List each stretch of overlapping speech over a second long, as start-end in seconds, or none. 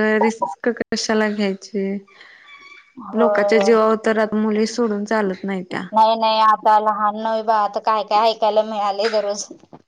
none